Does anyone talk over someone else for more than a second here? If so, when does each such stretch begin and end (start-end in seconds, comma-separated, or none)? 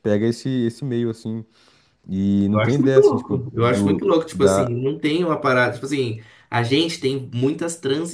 2.5-4.7